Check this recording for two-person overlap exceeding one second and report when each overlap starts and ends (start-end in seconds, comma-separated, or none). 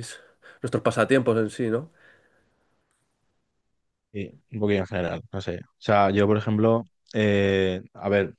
none